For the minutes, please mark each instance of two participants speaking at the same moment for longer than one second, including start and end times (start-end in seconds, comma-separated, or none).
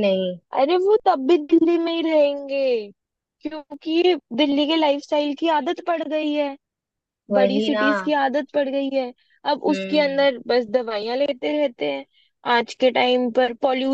none